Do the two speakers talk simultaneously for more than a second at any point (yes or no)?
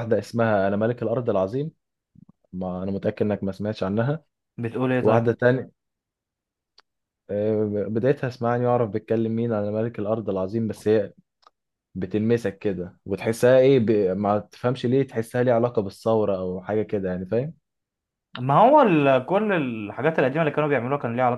no